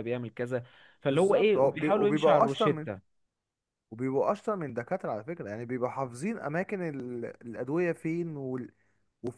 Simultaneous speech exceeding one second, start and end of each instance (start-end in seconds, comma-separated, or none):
1.1-2.9